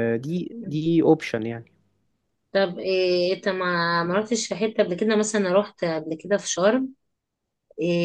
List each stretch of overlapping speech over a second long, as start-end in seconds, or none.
none